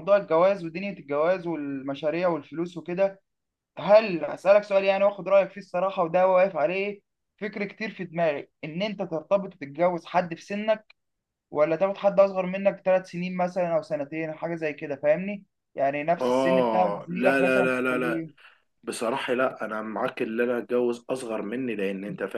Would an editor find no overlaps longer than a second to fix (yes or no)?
no